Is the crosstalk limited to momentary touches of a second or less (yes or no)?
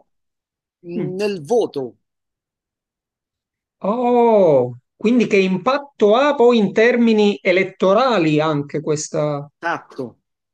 yes